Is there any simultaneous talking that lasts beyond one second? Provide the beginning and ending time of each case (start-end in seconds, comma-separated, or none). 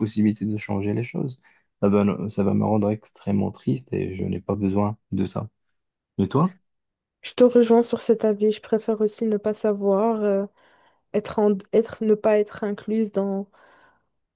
none